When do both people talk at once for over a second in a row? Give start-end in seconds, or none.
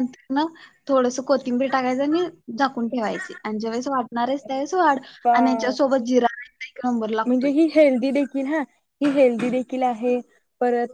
none